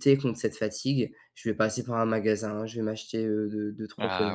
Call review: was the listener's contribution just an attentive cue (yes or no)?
yes